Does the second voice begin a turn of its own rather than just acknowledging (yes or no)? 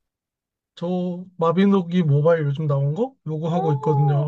yes